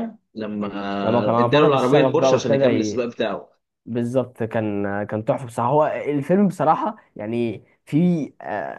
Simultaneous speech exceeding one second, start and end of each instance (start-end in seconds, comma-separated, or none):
1.3-3.0